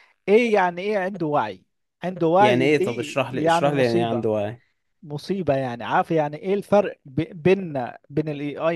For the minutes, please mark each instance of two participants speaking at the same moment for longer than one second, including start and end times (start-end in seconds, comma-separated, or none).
2.4-4.3